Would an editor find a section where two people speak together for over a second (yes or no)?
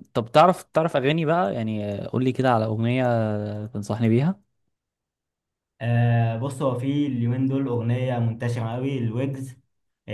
no